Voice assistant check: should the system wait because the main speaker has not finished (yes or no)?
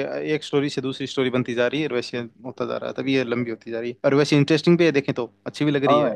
no